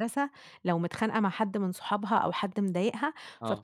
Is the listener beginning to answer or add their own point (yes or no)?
no